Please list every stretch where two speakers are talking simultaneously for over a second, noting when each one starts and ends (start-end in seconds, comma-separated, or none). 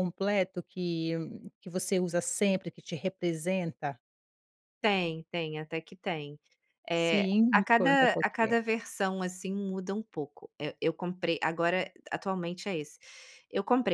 7.0-8.6